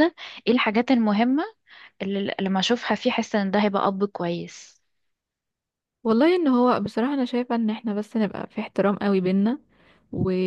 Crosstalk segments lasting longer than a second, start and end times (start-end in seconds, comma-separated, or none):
none